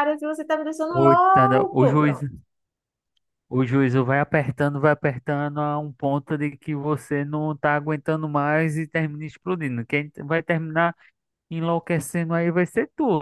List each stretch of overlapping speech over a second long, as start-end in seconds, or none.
0.9-2.2